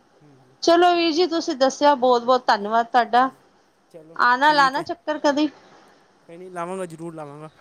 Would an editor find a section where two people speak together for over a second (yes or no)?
no